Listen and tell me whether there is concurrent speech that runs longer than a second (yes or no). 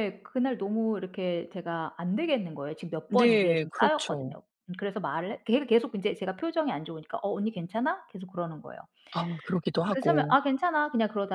yes